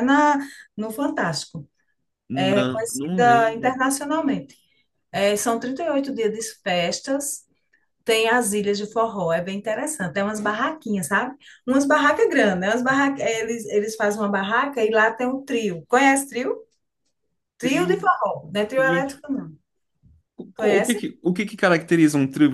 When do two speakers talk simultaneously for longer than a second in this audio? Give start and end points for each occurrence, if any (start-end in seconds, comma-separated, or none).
2.3-3.8